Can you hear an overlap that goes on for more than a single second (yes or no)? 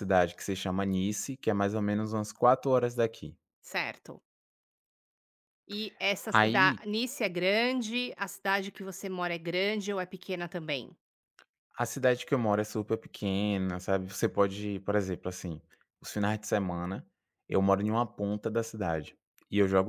no